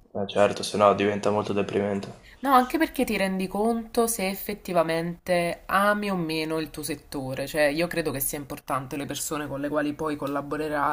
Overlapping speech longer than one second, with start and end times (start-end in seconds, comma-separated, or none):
none